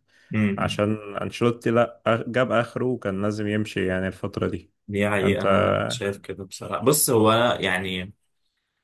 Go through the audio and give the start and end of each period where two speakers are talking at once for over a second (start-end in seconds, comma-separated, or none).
none